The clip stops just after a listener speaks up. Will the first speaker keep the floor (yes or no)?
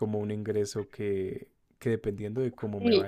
yes